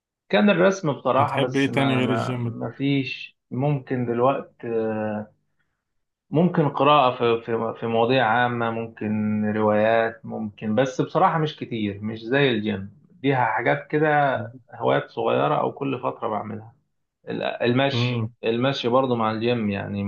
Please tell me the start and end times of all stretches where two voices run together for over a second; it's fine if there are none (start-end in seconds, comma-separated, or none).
1.2-2.6